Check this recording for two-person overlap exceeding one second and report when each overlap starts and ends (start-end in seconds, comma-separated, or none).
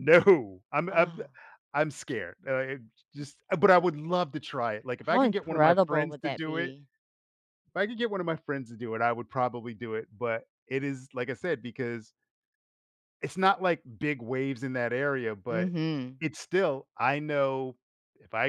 5.0-6.7